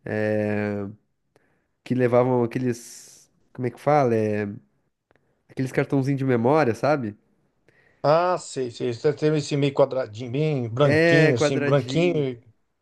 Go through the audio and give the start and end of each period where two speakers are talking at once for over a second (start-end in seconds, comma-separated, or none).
10.8-12.3